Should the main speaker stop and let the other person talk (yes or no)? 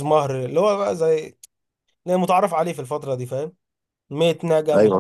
no